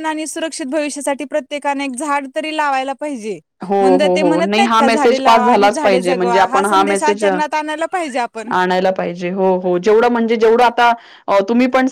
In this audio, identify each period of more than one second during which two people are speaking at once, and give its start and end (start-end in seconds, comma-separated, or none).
3.8-7.3